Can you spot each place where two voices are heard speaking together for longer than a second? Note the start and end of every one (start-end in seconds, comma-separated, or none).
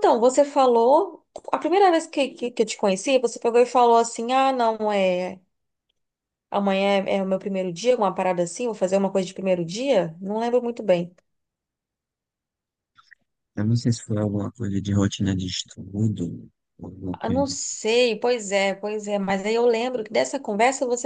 none